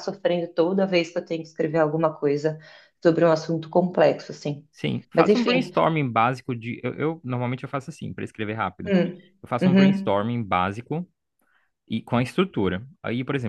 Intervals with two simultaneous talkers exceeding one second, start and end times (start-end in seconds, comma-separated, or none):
none